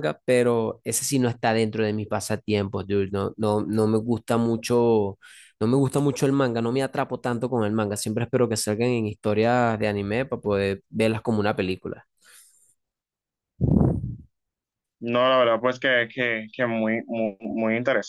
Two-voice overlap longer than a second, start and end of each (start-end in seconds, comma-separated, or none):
none